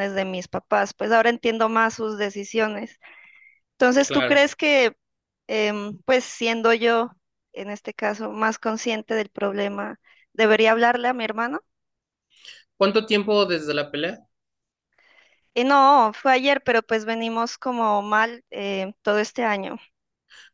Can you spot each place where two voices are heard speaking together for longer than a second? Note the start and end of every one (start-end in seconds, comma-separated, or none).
none